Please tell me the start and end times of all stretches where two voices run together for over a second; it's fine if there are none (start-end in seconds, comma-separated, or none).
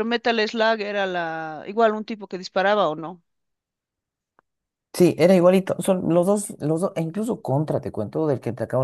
none